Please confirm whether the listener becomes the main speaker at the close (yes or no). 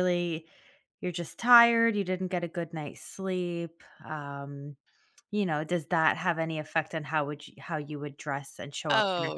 yes